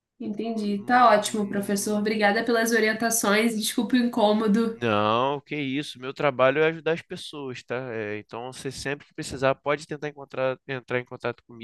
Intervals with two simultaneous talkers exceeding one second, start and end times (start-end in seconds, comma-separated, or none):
0.8-2.2